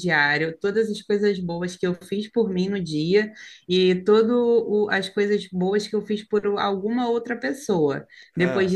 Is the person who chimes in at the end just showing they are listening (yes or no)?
yes